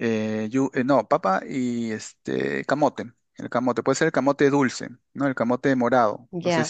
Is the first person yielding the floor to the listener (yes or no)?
yes